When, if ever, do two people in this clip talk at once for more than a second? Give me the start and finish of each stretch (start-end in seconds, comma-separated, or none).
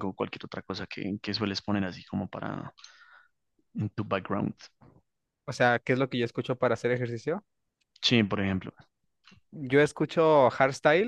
none